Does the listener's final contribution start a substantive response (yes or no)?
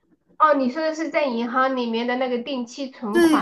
yes